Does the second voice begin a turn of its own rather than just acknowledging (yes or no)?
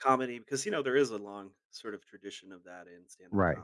yes